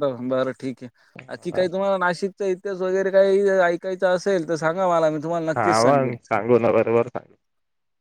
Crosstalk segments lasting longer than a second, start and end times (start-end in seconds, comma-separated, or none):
none